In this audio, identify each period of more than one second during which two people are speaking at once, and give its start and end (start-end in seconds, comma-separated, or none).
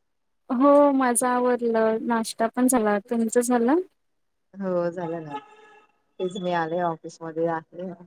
none